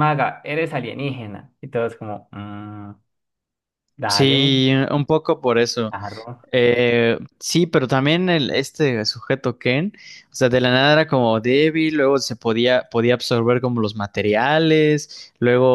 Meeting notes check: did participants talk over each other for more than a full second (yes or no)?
no